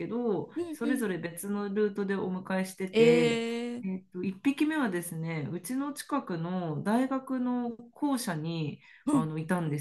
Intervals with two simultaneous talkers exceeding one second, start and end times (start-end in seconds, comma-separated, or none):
none